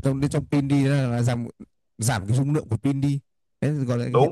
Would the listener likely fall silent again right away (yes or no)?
no